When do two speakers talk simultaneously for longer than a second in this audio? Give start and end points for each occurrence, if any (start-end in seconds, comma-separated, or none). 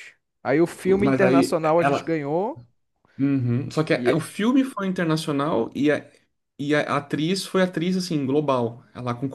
0.8-2.2